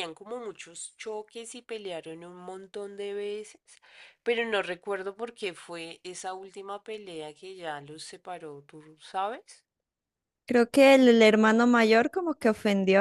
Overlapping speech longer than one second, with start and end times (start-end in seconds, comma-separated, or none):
none